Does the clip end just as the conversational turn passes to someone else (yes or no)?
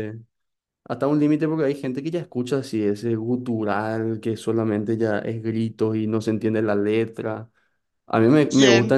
no